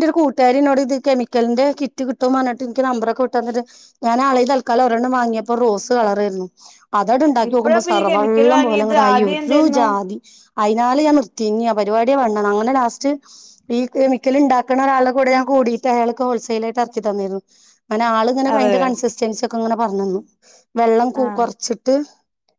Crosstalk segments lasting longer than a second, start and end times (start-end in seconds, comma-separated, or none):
7.5-9.8